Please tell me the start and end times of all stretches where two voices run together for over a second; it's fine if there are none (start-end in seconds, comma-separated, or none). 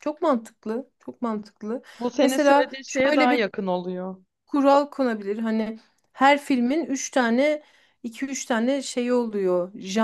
2.2-3.5